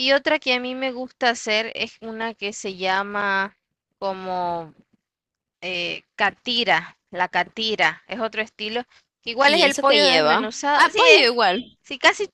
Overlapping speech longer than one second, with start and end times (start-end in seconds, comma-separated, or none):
9.4-11.3